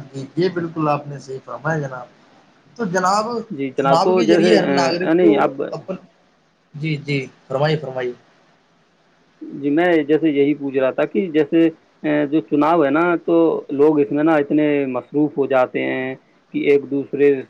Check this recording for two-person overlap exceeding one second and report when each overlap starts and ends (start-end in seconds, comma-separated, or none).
3.8-5.3